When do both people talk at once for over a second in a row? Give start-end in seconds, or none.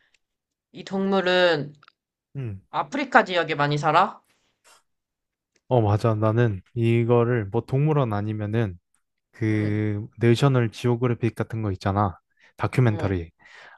none